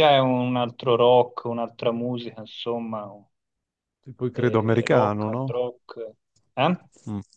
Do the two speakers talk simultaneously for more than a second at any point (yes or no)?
yes